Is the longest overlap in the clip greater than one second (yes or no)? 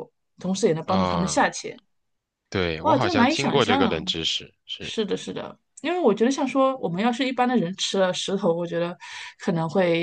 yes